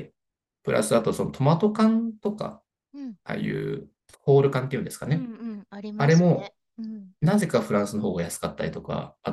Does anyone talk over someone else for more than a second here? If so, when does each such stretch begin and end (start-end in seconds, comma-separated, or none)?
none